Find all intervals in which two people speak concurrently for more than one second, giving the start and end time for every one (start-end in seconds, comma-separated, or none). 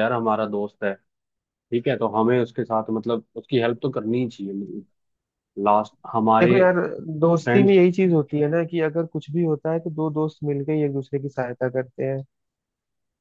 none